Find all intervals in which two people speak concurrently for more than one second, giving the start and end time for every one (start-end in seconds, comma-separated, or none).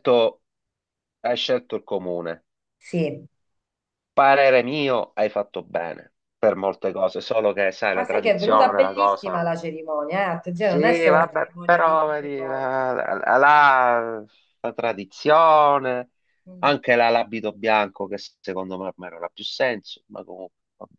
8.0-9.5, 10.5-13.0